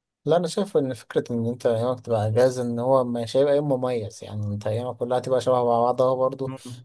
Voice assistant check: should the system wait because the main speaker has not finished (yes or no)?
yes